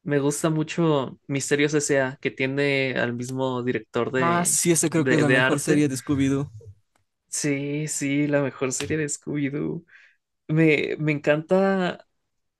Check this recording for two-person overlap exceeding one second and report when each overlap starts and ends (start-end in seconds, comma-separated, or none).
4.2-5.9